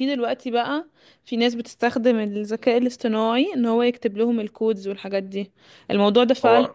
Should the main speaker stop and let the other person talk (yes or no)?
no